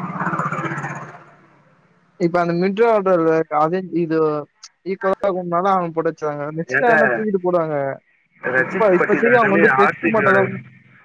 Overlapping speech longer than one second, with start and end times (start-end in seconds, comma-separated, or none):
8.6-10.4